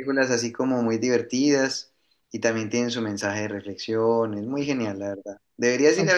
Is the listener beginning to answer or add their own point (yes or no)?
no